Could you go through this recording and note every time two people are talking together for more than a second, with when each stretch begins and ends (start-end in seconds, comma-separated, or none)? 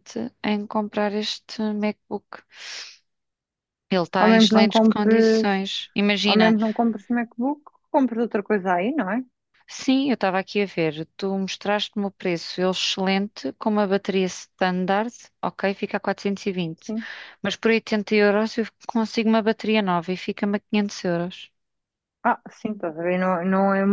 4.2-5.5